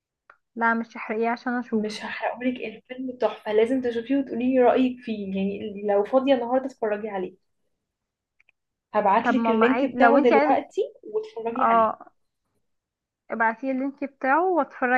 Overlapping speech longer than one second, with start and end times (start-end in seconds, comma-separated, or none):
9.2-10.6